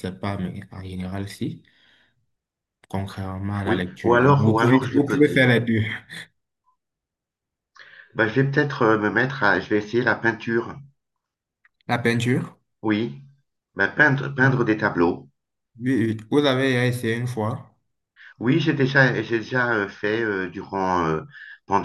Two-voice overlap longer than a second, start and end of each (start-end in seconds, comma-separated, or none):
3.7-5.5